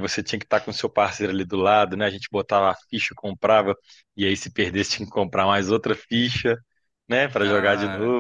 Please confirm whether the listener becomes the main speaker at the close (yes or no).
no